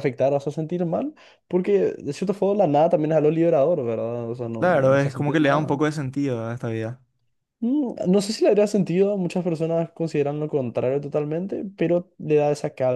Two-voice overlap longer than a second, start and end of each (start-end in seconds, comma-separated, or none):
4.6-5.8